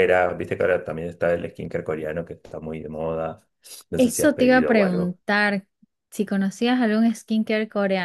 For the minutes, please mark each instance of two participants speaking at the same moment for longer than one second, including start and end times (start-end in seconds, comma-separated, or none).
4.0-5.2